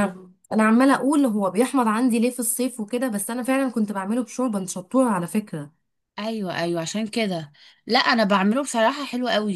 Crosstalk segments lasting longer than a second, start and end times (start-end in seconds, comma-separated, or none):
none